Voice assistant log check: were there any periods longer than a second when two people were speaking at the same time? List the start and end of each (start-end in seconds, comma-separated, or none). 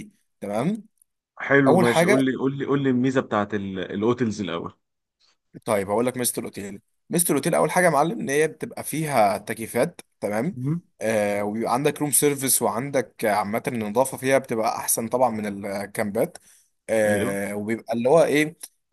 none